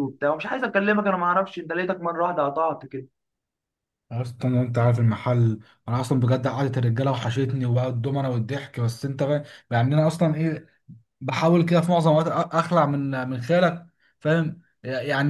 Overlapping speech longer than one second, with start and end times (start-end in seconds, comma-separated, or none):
none